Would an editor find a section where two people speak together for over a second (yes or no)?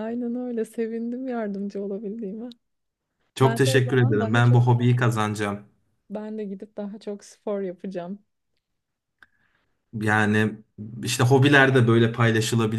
yes